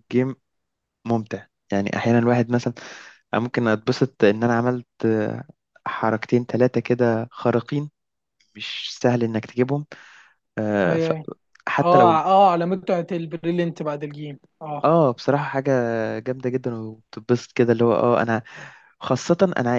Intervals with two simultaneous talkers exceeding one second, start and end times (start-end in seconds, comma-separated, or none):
none